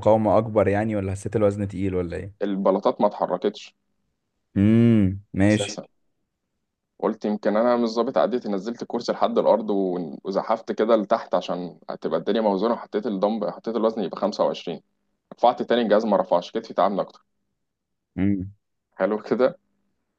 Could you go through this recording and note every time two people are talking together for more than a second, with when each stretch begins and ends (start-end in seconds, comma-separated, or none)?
none